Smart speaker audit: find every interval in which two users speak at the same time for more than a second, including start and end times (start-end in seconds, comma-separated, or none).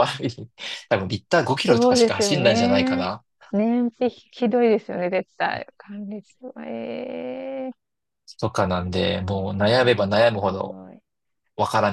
1.7-3.0, 9.2-10.8